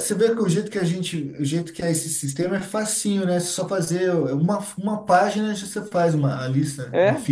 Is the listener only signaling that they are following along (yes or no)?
no